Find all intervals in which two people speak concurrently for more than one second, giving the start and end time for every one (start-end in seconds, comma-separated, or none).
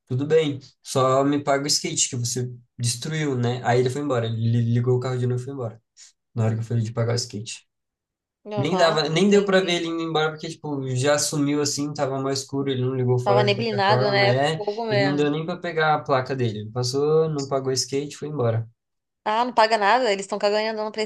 8.6-9.8, 13.2-15.3